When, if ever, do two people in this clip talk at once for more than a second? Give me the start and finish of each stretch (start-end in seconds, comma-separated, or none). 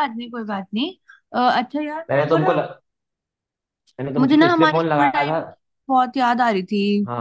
4.2-5.4